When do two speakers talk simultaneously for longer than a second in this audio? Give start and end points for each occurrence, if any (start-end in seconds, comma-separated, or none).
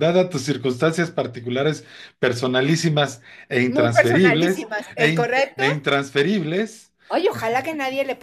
3.6-5.6